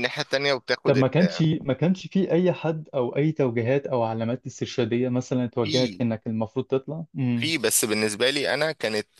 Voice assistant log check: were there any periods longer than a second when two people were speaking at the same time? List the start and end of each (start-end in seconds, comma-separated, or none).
none